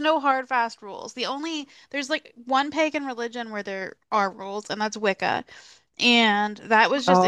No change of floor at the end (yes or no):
yes